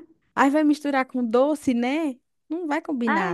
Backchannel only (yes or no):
no